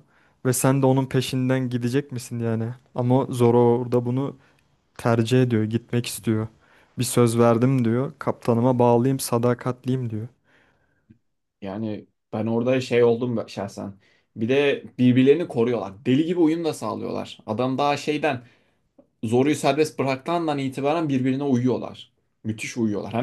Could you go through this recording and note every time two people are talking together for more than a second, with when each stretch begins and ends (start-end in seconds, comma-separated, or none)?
none